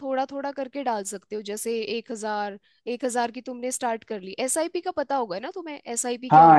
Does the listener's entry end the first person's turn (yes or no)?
yes